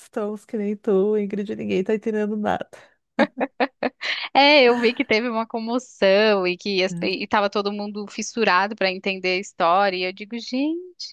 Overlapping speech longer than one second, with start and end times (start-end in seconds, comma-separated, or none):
none